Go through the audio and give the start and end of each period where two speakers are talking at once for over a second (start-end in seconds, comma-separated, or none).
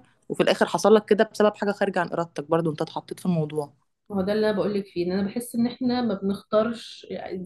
none